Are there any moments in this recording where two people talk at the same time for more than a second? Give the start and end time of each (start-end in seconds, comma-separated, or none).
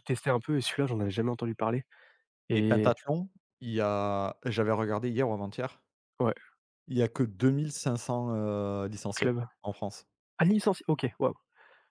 none